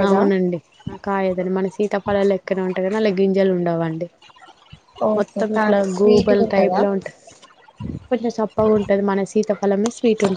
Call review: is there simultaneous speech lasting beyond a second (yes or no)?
yes